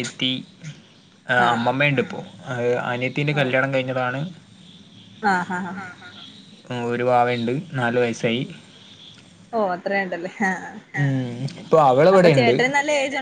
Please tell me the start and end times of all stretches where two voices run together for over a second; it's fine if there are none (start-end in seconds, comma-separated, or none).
none